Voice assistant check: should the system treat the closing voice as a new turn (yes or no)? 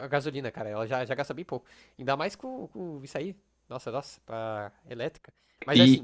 no